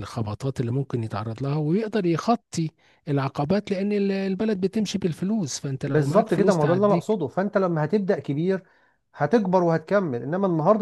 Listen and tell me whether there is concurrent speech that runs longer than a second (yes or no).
yes